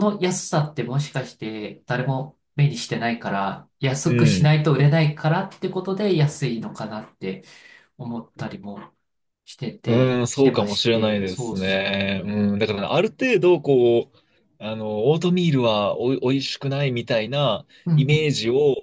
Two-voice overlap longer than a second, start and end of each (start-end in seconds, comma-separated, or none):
9.9-12.0